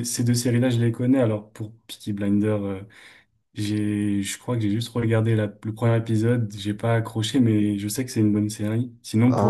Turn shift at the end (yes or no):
yes